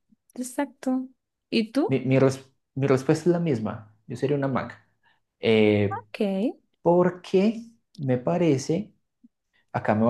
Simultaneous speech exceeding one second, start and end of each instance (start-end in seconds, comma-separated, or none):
none